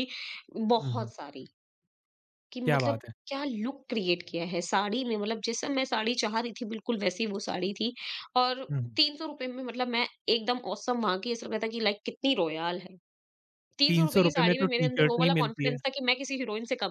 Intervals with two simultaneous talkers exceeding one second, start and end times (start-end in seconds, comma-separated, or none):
13.9-15.8